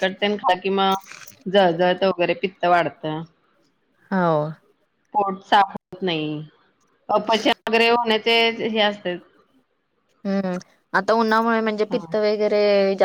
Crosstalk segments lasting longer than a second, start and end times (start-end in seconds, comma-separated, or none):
none